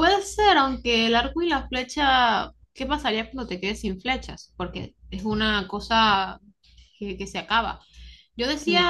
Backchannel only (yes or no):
yes